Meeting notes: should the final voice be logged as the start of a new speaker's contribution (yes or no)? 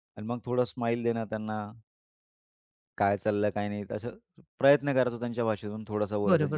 yes